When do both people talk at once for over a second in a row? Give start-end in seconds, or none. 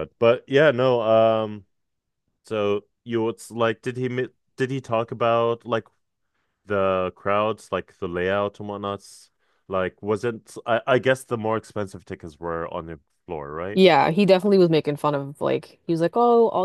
none